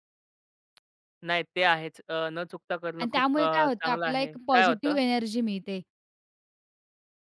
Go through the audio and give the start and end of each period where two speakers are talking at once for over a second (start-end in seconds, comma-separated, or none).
3.0-5.0